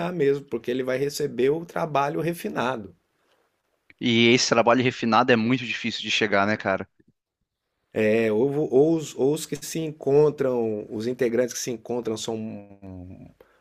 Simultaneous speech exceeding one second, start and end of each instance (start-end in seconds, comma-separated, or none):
none